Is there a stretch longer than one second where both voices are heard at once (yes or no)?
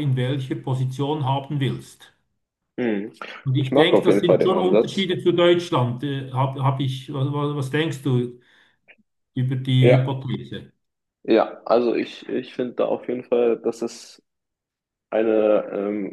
yes